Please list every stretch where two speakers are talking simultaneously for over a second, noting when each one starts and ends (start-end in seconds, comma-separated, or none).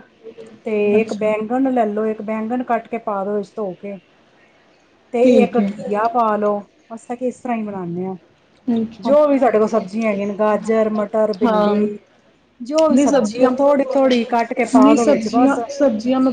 12.9-15.6